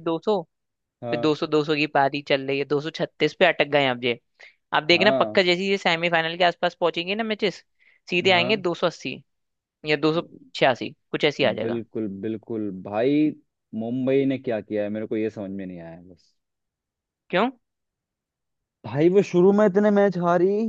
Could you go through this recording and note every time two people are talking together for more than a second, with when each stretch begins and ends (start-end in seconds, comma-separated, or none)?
none